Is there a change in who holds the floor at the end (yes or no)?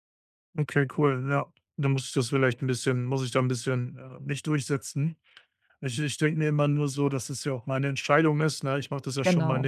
no